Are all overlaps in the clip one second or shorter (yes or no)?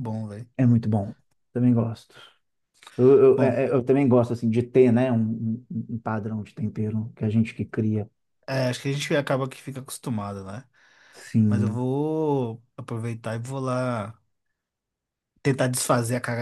yes